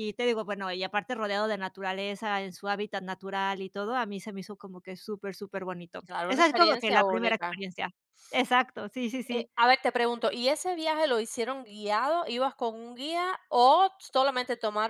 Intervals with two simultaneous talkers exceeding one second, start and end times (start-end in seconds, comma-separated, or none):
6.1-7.6